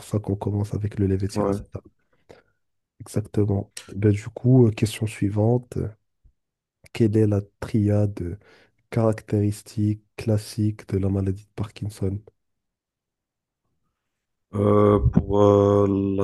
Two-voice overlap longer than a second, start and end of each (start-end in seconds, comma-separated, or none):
none